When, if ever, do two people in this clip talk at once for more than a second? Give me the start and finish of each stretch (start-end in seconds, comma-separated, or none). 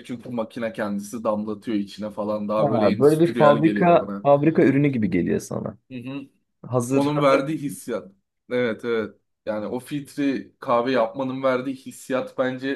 2.6-4.3